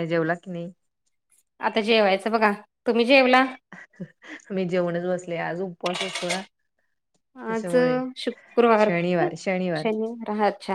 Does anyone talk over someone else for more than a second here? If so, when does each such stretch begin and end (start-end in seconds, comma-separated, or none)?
none